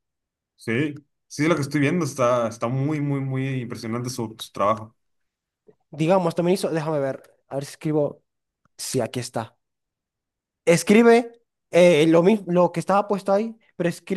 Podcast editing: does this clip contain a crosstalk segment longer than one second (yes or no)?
no